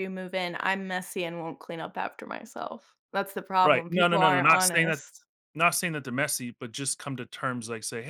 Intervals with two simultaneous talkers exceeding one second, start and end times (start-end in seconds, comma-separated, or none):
3.6-5.0